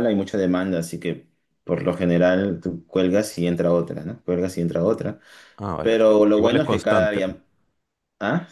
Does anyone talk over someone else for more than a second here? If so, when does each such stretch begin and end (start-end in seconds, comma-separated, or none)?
5.8-7.2